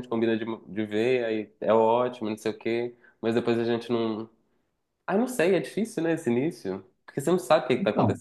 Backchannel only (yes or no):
yes